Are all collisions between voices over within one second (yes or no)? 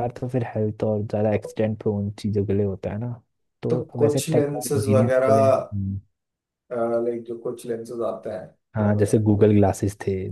no